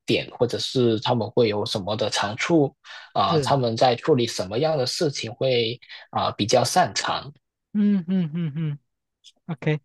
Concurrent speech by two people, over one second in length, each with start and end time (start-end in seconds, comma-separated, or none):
none